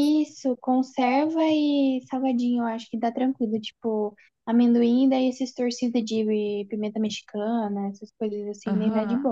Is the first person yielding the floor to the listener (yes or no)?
yes